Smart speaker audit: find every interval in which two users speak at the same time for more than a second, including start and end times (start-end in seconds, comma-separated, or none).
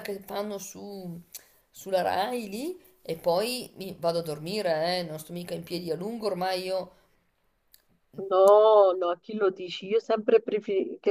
none